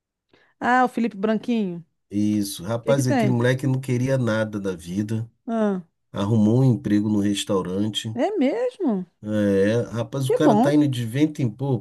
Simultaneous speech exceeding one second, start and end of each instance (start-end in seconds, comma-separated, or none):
none